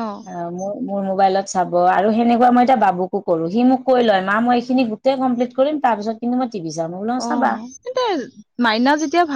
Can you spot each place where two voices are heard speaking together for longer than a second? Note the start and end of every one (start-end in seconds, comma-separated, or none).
none